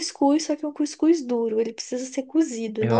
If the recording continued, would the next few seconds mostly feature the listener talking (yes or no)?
yes